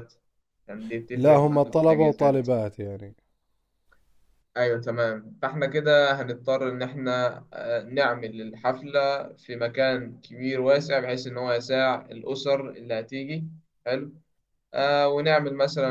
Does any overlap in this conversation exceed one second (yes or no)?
yes